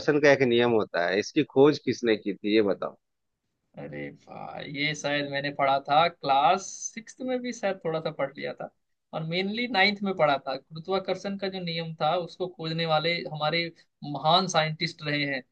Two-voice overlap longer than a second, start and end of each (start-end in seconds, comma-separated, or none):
none